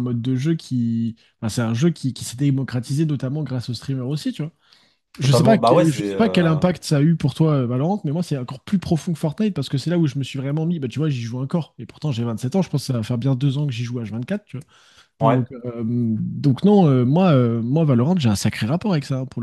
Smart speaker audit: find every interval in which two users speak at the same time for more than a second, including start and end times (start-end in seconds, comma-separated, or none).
5.2-6.6